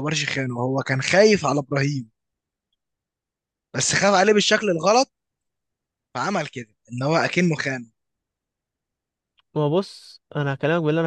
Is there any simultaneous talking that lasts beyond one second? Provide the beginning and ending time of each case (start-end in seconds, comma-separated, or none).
none